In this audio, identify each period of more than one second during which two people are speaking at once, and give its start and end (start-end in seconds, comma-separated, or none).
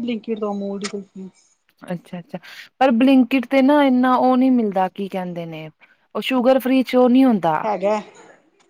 none